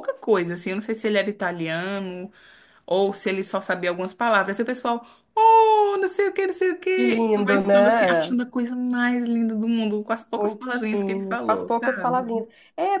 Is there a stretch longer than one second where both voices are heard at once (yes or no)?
yes